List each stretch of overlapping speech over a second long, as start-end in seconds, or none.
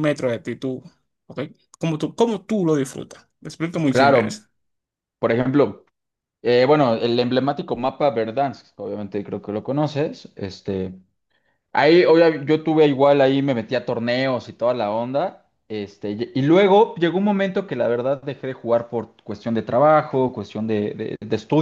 none